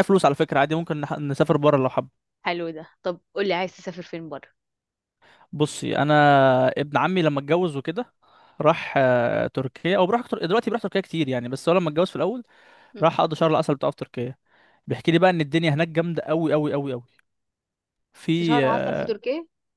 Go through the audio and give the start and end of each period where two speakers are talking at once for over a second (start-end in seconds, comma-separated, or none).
none